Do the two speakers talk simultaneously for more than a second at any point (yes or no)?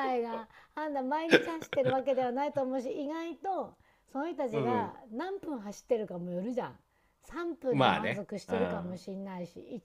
yes